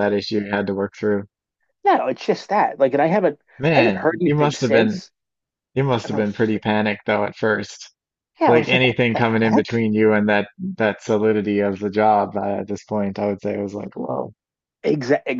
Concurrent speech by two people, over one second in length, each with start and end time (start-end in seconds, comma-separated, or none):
3.6-5.0, 8.4-9.9